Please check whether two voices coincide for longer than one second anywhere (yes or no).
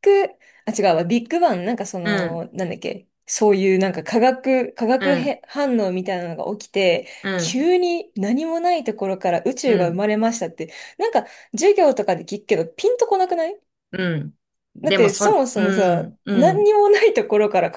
yes